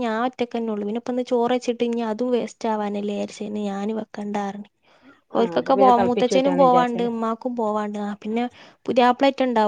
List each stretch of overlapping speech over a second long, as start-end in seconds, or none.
5.4-7.1